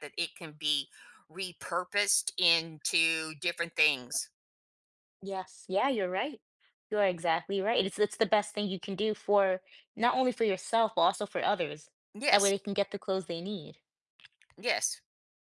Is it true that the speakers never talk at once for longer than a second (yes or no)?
yes